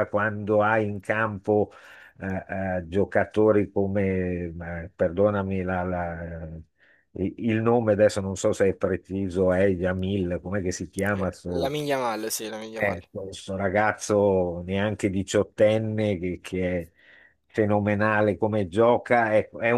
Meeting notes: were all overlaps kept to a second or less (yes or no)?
yes